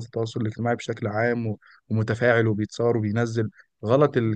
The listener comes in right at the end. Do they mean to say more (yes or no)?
no